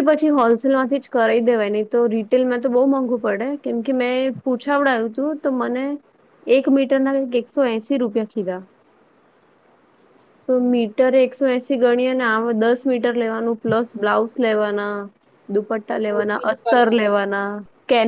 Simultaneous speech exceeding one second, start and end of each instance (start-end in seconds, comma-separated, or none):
15.5-17.1